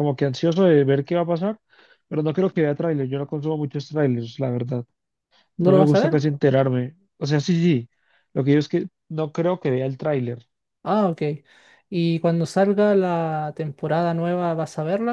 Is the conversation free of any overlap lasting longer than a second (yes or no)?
yes